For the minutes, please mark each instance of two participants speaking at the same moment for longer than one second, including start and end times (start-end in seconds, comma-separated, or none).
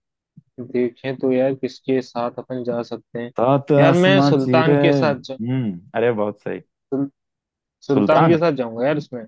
3.8-5.4